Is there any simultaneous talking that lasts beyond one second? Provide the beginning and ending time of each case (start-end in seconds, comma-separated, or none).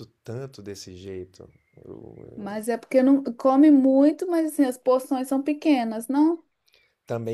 none